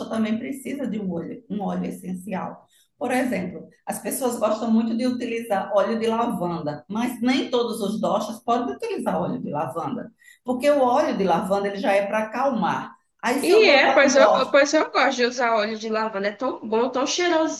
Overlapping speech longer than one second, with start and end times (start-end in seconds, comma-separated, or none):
13.4-14.6